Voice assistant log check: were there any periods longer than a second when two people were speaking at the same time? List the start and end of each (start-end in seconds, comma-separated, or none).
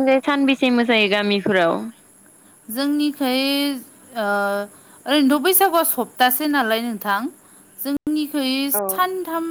none